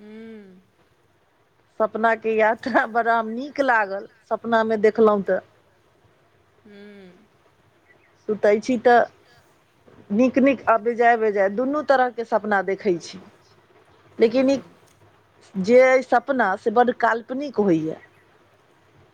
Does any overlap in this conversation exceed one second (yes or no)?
no